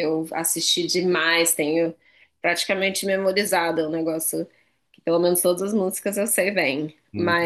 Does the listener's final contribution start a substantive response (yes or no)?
no